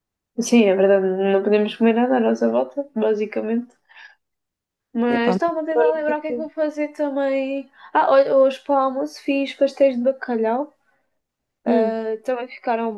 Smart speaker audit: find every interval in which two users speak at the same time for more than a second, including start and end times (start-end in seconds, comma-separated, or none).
5.1-6.5